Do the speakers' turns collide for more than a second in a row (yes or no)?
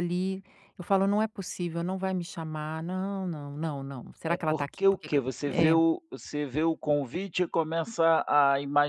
yes